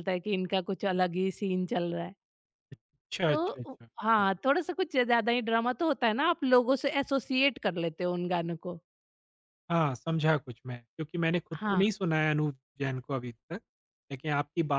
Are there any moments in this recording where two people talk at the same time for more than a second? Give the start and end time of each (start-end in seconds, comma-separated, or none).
none